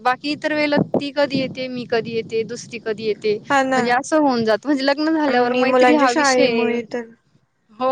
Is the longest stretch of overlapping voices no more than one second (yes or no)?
no